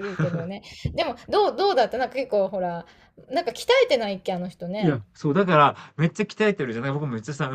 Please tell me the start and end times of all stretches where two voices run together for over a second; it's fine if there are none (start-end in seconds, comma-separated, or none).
none